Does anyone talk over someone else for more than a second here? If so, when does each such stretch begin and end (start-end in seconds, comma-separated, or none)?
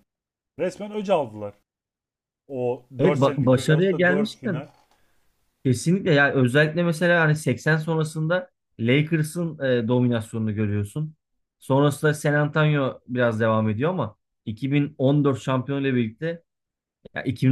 3.0-4.6